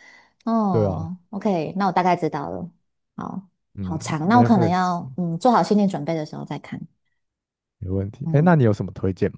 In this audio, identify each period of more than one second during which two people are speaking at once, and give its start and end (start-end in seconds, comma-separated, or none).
3.7-5.0